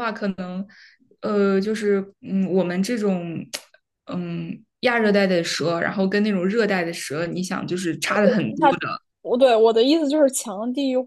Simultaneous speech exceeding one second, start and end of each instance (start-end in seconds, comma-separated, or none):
none